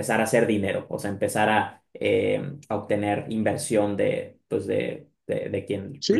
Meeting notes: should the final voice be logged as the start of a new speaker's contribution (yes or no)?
yes